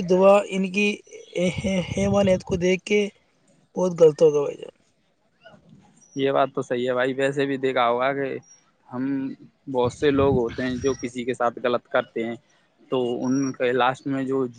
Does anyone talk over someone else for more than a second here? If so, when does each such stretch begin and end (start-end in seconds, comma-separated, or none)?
none